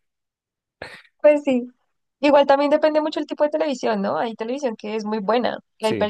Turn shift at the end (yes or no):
no